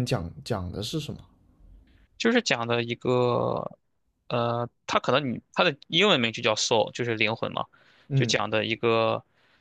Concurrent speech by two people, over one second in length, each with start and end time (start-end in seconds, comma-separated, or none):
none